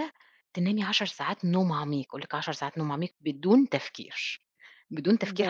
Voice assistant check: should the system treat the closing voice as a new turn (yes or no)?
yes